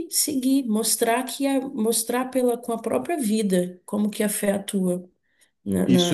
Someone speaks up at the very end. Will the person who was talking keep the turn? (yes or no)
no